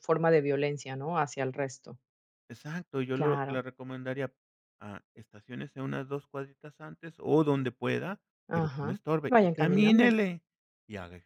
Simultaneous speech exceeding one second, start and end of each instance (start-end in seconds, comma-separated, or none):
8.5-10.2